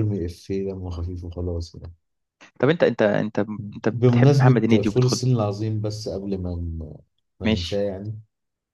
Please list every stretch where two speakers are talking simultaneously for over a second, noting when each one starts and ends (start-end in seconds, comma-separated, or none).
3.9-5.2